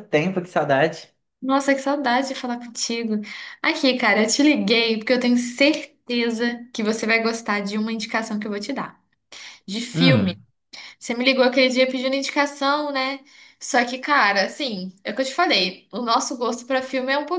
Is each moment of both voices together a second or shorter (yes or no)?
yes